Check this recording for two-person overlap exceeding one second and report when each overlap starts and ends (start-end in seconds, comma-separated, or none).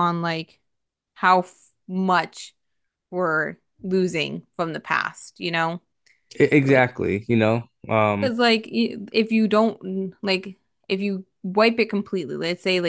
none